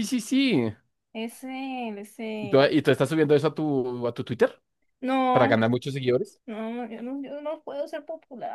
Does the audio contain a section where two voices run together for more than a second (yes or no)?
no